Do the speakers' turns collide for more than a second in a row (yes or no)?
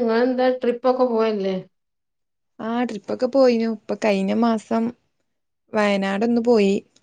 no